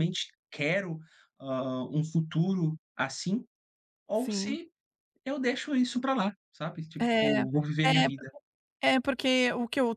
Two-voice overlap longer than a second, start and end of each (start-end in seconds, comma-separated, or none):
none